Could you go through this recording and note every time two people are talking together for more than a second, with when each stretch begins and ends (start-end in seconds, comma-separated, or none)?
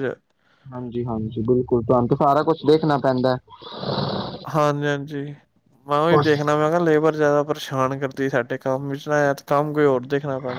none